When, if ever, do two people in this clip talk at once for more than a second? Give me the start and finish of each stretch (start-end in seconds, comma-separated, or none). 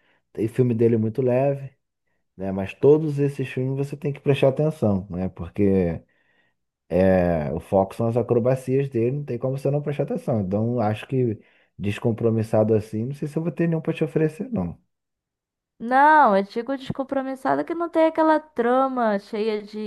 none